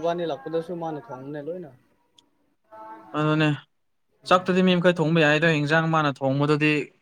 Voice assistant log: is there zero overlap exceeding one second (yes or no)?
yes